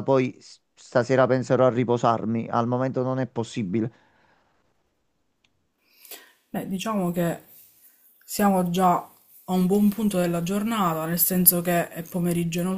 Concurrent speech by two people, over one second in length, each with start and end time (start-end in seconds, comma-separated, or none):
none